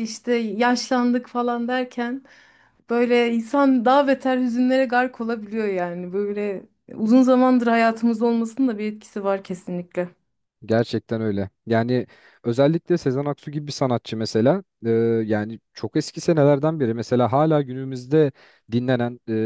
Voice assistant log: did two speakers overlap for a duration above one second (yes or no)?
no